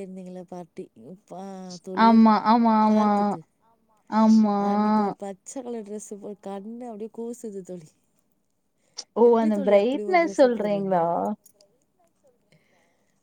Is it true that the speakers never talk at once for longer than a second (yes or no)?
no